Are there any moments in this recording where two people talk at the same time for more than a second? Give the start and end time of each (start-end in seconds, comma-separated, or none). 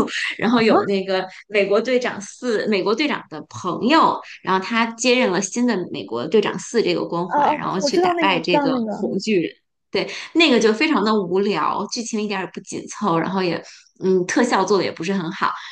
7.3-9.0